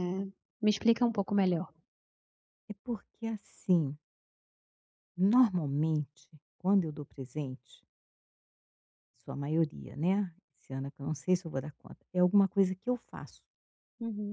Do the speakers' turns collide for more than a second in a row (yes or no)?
no